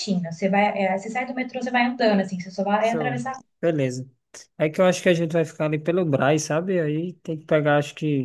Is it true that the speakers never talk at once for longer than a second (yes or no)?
yes